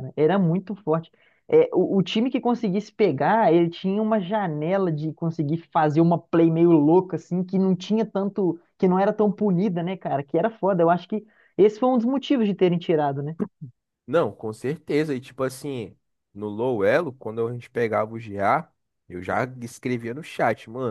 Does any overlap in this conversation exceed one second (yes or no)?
no